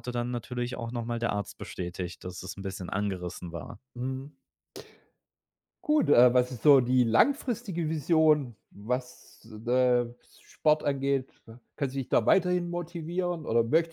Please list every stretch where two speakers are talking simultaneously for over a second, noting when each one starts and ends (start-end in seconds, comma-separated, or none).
none